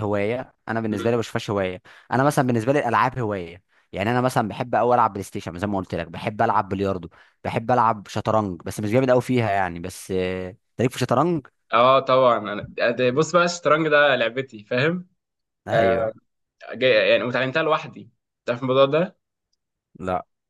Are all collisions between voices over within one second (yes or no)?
yes